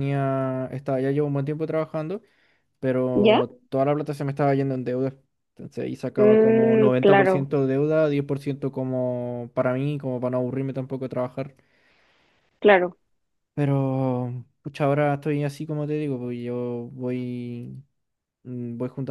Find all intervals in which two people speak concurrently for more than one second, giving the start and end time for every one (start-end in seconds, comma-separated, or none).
6.2-7.5